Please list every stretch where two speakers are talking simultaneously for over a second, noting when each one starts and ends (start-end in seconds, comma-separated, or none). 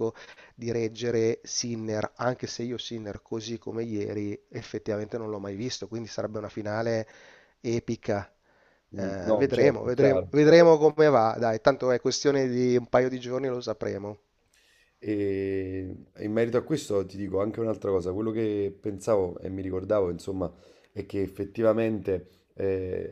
8.9-10.3